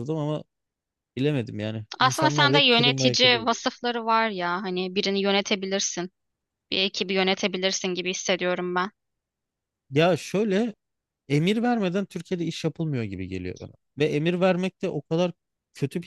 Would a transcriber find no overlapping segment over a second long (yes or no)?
no